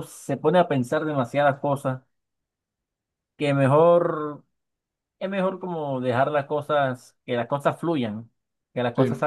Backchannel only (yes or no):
yes